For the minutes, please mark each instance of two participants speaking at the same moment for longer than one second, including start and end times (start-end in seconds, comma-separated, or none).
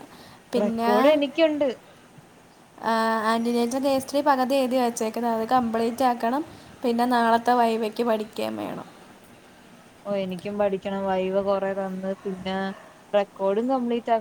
none